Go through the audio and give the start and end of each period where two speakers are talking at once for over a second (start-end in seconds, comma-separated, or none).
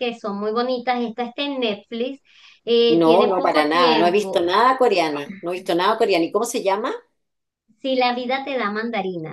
3.0-4.5